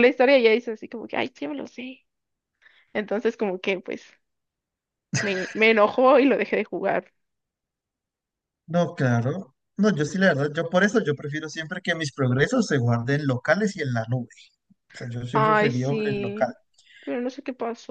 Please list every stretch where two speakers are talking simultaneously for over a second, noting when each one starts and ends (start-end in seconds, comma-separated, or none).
15.3-16.5